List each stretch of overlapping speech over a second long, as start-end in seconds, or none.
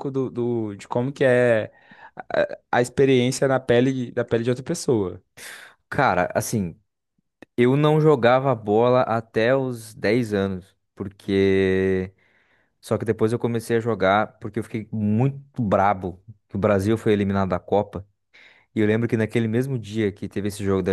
none